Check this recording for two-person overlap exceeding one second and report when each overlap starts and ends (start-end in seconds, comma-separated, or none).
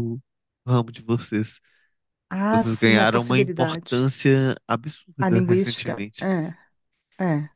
2.5-4.1, 5.2-6.5